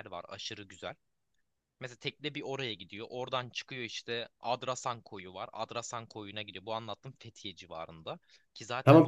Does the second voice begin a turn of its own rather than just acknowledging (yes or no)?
yes